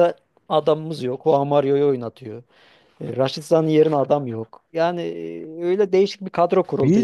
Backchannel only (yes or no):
no